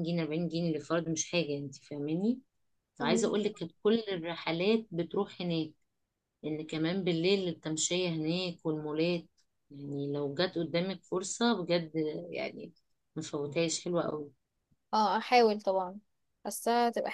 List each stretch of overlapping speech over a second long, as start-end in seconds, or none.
none